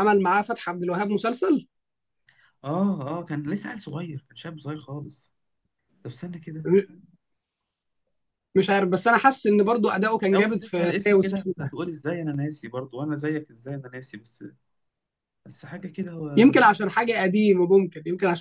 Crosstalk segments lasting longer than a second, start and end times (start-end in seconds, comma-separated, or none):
10.3-11.7